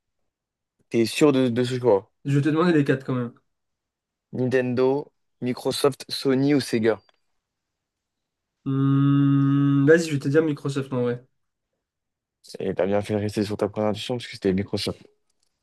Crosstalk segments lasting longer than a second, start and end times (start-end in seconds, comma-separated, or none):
none